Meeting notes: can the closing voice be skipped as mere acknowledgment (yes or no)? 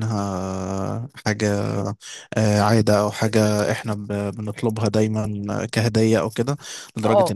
yes